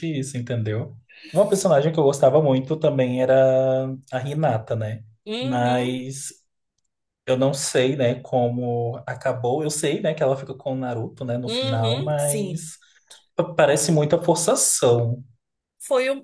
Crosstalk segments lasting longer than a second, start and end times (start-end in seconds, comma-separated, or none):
11.5-12.7